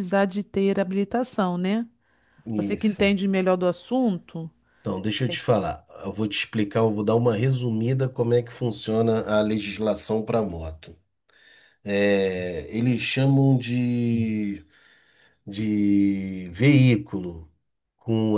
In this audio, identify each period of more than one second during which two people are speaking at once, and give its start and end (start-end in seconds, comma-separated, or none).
none